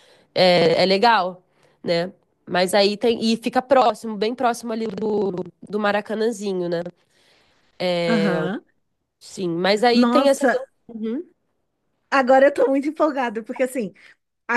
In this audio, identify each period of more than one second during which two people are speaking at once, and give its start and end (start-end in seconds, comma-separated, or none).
none